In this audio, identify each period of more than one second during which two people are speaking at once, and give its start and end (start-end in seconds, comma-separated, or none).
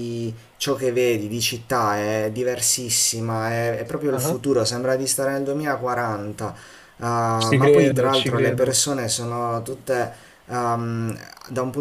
7.5-8.8